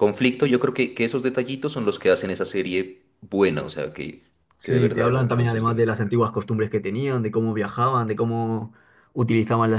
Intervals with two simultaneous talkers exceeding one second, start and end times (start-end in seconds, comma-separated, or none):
4.6-5.8